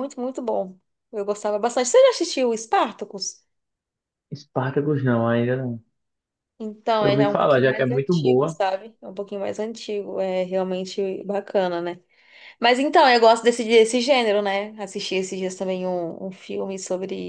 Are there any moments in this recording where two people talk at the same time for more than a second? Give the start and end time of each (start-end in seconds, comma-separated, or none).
7.0-8.6